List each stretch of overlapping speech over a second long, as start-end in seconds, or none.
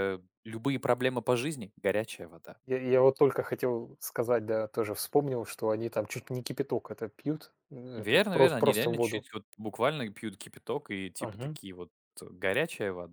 8.0-9.2